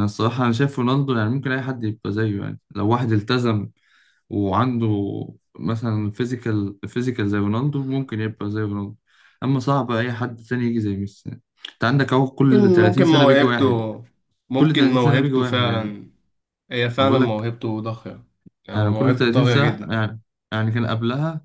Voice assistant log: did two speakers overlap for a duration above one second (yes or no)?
yes